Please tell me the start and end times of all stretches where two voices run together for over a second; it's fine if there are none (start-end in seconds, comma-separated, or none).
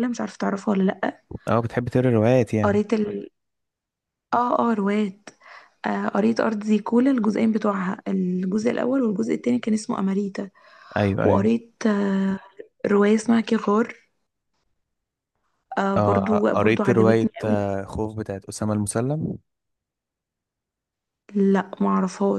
16.0-17.6